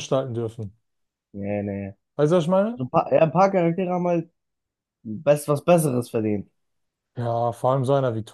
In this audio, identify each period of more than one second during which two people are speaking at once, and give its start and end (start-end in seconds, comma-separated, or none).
none